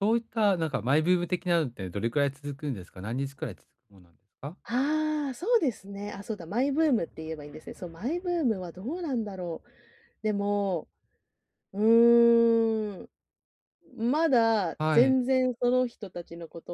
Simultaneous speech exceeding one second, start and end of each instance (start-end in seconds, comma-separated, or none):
none